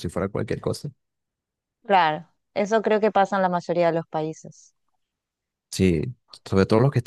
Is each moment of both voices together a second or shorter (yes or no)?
yes